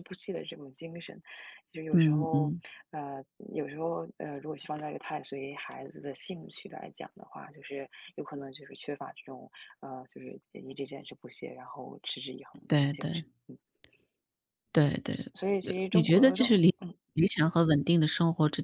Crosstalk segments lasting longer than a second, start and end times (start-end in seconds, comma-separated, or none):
15.1-16.7